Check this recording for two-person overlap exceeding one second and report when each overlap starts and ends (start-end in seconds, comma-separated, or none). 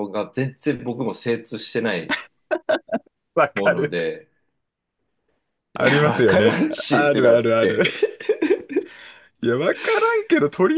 5.8-7.8